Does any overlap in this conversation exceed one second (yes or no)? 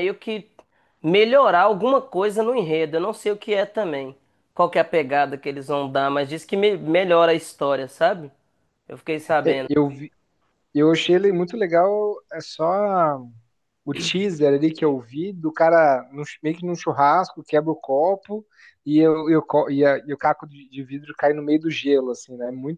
no